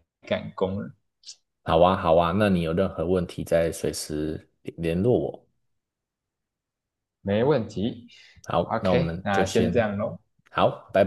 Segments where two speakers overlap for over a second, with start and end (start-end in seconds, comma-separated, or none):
8.6-9.8